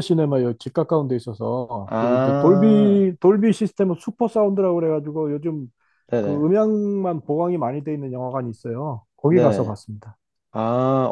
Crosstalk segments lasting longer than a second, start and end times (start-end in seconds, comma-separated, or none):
1.9-3.1